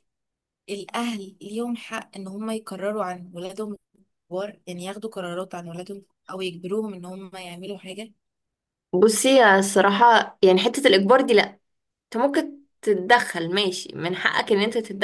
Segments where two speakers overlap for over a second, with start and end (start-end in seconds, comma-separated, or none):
none